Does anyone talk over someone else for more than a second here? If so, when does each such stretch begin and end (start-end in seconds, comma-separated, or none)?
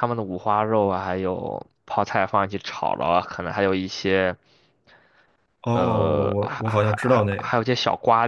5.7-7.5